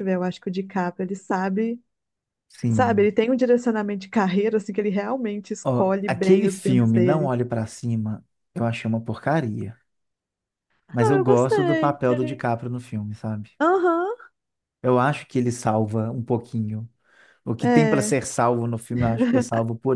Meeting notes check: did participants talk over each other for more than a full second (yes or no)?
yes